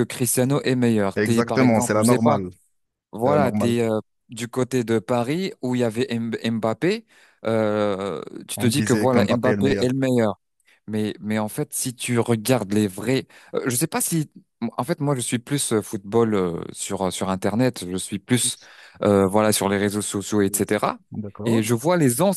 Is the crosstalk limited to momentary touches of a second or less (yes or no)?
no